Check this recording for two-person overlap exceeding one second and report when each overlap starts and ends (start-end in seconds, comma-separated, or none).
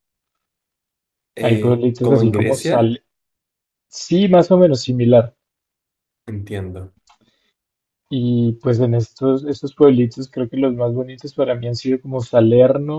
1.4-3.0